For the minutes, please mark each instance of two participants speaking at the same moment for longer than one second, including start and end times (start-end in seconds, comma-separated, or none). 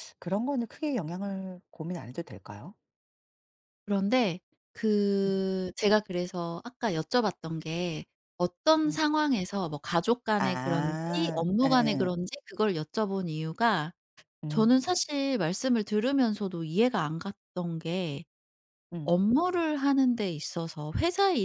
10.4-12.2